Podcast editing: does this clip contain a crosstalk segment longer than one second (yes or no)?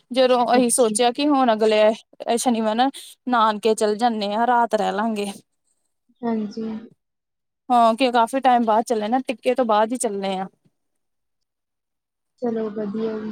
no